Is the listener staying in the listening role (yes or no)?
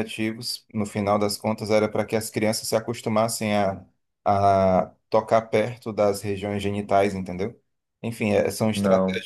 yes